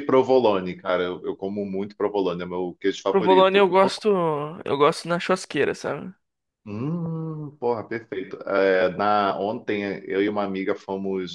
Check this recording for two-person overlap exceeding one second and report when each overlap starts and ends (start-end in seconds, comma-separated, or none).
none